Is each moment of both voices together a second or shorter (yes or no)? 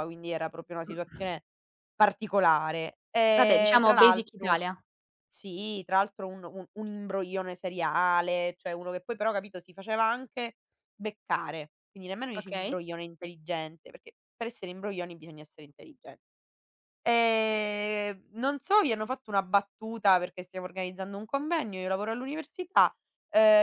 no